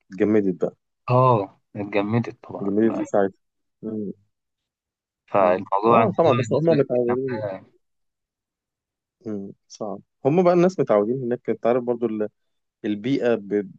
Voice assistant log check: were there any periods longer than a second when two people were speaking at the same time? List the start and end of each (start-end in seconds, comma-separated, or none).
5.4-7.3